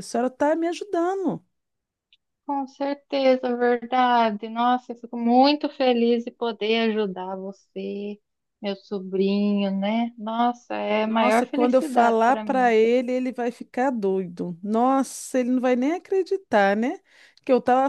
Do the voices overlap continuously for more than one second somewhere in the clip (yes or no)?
yes